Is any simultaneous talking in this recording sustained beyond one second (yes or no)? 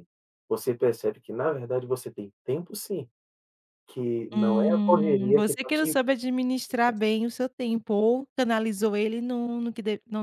yes